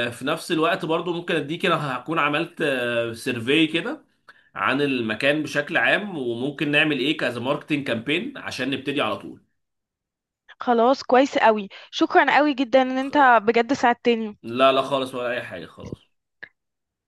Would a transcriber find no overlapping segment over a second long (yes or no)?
yes